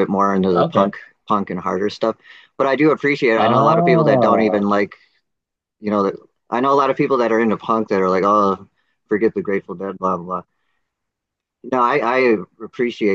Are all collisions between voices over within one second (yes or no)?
no